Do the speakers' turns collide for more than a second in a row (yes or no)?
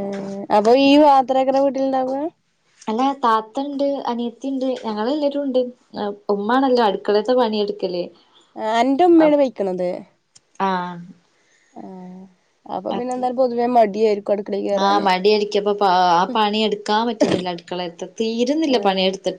no